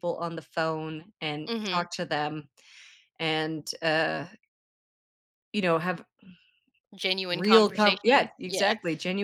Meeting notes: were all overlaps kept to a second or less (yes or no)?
no